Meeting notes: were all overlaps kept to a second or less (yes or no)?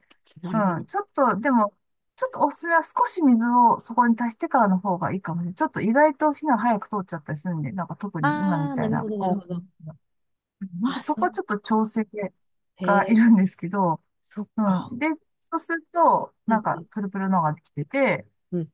no